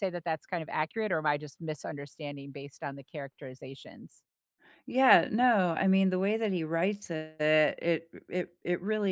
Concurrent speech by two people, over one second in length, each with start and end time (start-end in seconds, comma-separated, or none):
none